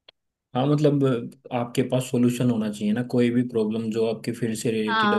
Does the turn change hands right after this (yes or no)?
no